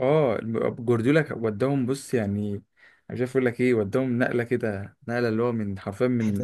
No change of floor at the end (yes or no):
yes